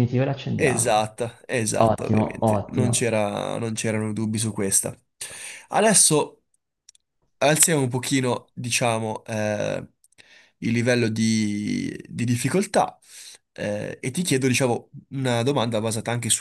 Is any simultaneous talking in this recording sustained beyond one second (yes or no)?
yes